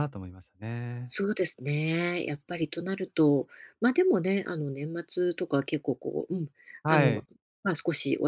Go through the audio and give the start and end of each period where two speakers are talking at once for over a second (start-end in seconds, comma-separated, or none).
none